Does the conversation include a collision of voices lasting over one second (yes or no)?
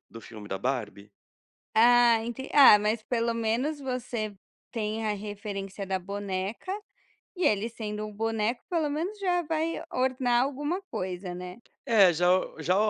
no